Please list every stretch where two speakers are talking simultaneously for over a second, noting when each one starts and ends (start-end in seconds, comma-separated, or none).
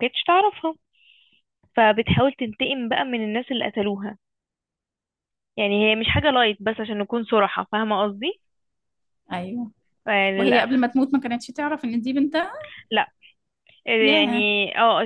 none